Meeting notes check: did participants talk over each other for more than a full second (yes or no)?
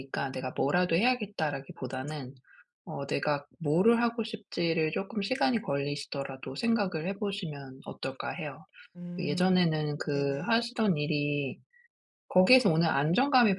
yes